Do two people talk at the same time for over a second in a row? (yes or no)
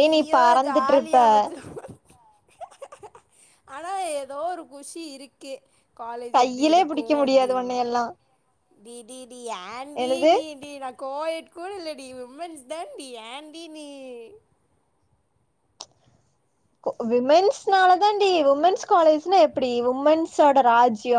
yes